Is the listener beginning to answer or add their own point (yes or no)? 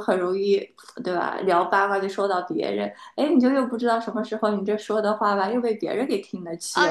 yes